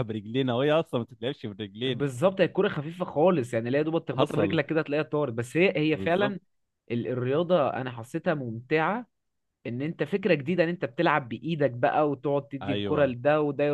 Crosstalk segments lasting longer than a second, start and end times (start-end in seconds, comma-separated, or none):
none